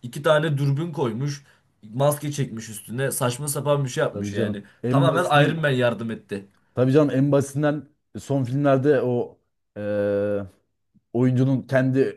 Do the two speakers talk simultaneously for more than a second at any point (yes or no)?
yes